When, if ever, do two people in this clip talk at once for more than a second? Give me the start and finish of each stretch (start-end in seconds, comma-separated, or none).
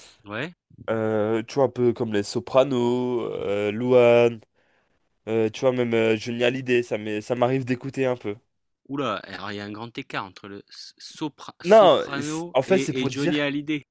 11.6-13.4